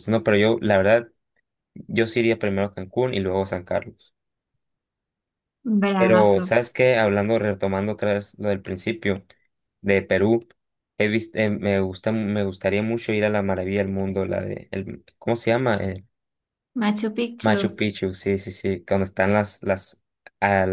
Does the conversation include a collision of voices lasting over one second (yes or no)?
no